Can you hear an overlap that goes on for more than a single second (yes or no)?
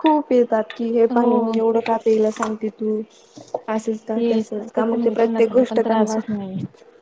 yes